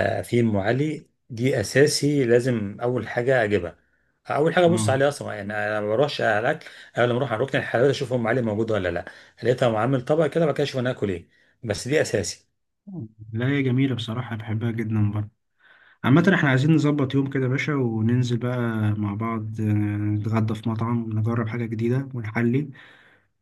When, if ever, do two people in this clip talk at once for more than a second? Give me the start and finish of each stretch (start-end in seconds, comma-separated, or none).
none